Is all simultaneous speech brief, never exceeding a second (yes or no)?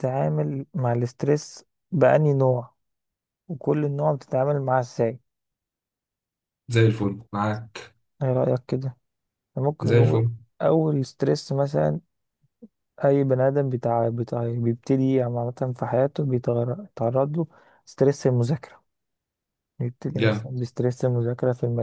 yes